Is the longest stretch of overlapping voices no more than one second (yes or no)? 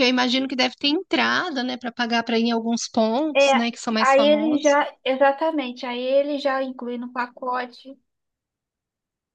no